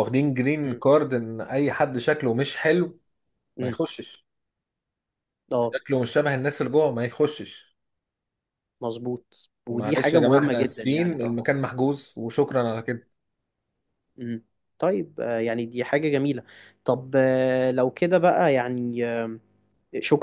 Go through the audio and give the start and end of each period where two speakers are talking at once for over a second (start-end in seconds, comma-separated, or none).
9.7-11.4